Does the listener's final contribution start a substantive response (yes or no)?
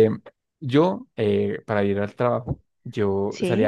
no